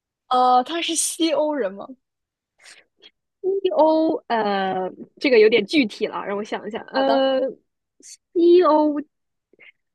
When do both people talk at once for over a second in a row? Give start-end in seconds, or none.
none